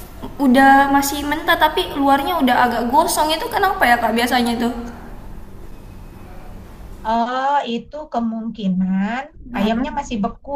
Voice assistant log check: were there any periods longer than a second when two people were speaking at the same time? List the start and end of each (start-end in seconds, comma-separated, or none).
none